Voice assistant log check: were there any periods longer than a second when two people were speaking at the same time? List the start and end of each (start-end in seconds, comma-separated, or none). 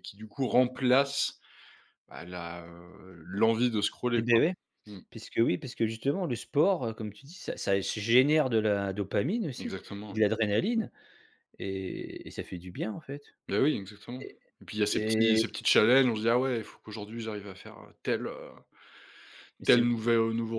none